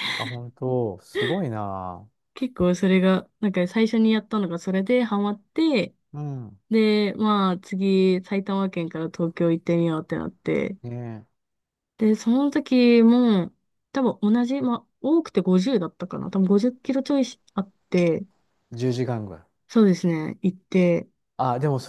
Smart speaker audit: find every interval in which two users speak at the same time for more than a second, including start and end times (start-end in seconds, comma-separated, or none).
none